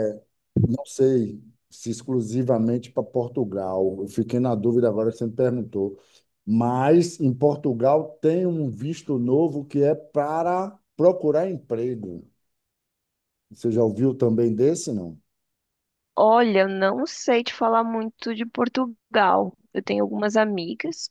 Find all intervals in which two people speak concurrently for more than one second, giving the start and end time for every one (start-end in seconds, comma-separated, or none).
none